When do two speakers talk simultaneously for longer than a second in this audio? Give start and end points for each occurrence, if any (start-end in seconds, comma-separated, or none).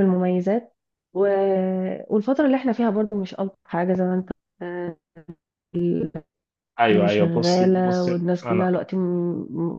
6.9-8.7